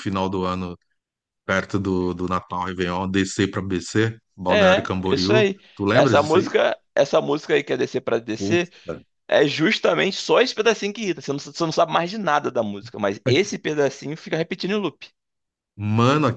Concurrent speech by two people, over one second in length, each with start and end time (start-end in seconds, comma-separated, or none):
4.5-6.5